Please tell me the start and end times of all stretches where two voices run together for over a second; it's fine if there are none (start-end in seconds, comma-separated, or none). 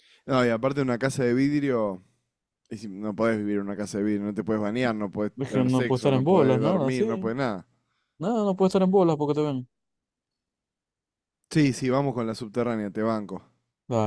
5.4-7.0